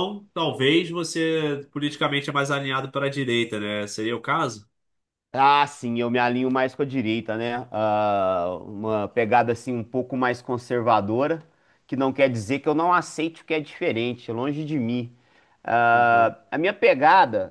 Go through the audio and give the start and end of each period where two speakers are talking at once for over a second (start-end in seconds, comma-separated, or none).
none